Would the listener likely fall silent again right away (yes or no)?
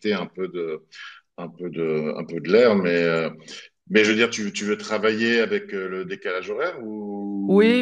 no